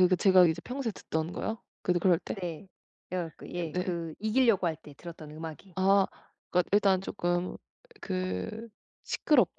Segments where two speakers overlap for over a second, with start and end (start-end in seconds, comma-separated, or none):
none